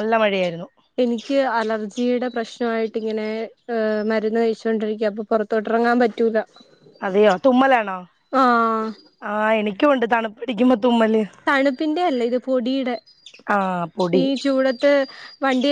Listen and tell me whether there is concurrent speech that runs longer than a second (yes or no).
no